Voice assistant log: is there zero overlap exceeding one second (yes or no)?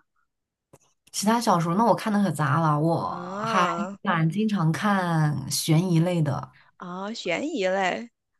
yes